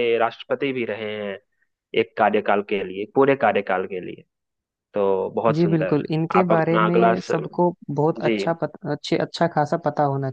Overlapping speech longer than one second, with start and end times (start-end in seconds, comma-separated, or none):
5.5-7.3